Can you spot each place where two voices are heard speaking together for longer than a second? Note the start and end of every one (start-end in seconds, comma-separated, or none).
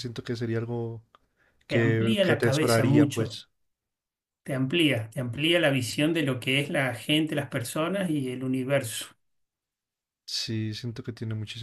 1.7-3.4